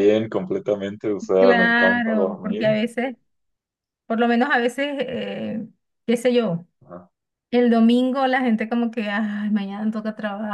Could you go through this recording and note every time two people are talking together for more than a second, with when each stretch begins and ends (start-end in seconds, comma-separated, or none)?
1.4-2.7